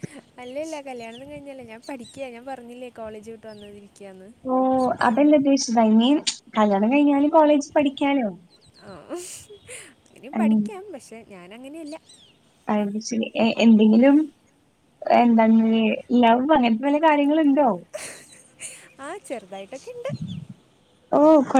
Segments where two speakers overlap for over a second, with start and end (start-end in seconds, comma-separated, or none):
none